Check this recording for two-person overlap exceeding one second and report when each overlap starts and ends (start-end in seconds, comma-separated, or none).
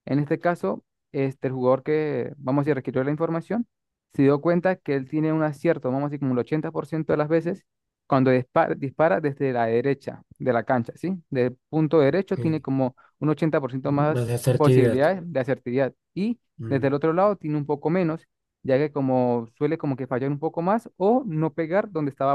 13.8-15.1